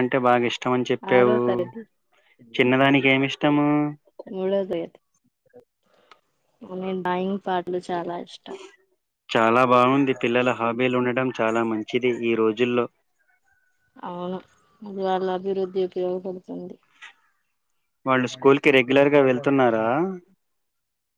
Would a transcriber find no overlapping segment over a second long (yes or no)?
yes